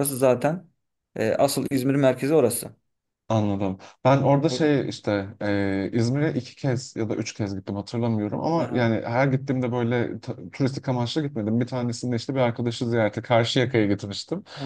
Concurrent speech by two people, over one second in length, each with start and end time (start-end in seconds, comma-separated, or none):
none